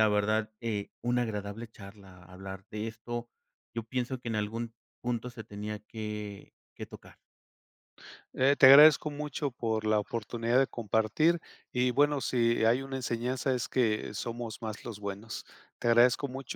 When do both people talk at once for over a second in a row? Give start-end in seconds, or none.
none